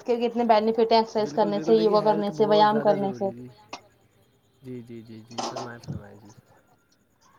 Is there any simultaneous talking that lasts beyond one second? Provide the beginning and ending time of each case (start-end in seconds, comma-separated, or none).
1.2-3.3